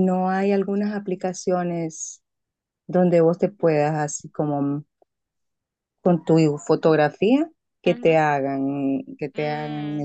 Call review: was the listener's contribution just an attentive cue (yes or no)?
no